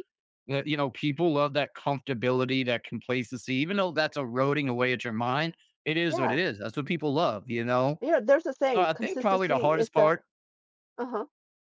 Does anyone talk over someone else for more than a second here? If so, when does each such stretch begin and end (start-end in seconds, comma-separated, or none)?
8.7-10.1